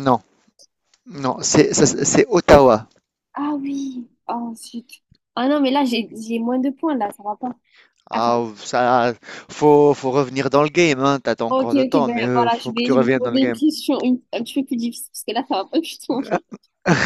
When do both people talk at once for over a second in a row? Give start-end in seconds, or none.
11.5-13.6